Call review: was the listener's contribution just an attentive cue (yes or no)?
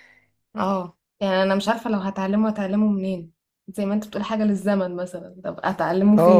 no